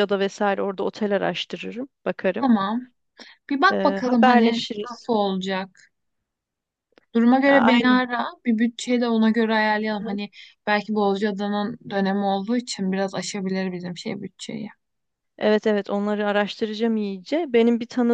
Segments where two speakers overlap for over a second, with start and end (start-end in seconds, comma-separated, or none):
3.7-5.1